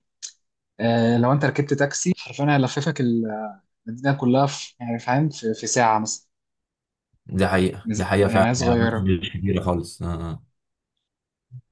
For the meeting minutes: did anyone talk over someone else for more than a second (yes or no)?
yes